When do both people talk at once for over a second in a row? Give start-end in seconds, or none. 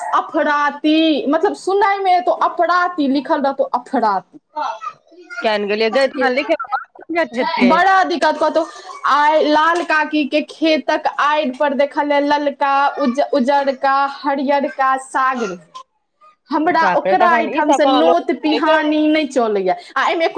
16.8-18.8